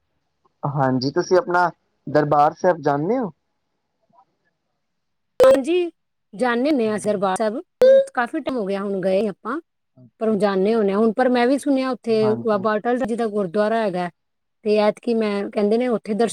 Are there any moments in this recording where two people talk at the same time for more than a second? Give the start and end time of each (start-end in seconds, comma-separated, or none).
none